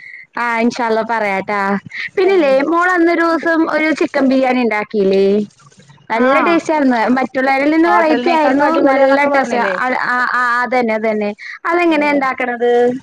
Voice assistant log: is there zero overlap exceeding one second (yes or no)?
no